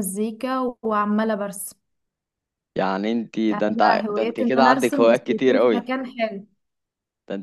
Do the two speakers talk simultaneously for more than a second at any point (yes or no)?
yes